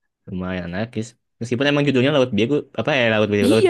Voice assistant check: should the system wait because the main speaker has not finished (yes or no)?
no